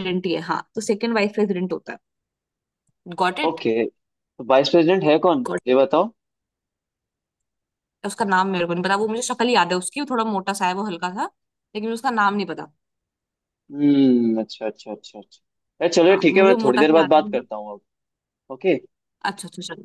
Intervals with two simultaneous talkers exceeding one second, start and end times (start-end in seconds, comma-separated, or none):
16.1-17.5